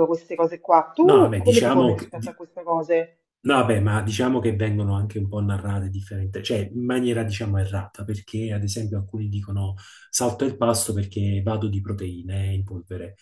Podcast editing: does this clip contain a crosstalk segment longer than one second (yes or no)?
yes